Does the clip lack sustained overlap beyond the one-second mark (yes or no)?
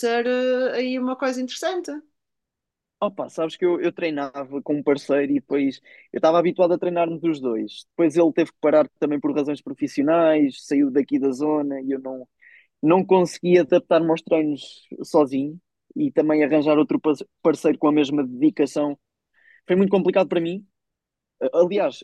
yes